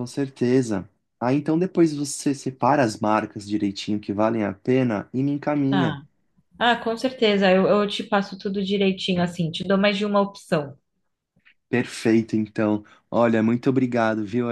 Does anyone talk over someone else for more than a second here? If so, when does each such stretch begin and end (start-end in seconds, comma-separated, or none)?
none